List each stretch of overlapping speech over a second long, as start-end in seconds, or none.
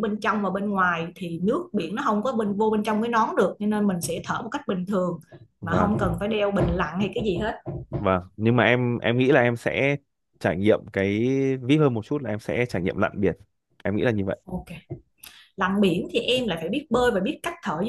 none